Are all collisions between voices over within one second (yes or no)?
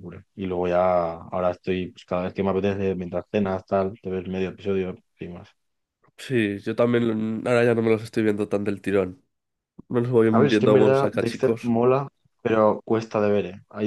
no